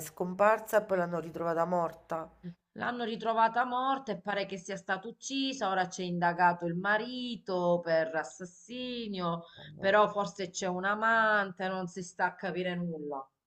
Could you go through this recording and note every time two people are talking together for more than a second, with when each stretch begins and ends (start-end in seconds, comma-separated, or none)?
none